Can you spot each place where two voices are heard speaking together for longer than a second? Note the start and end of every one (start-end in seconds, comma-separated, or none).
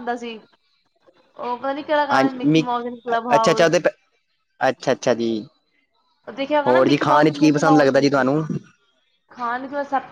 6.7-8.3